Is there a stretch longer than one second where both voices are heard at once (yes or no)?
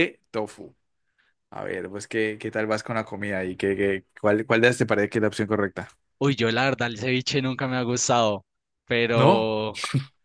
no